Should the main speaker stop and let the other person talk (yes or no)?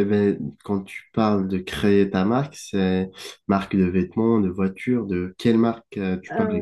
yes